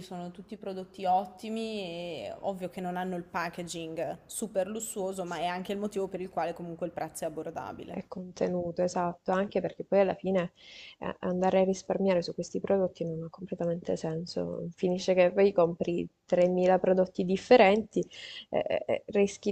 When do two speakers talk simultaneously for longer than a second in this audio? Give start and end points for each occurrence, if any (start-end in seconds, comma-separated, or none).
none